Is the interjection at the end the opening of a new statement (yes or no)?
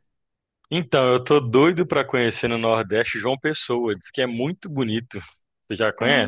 yes